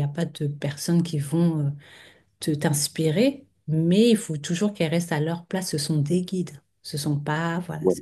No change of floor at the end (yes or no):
yes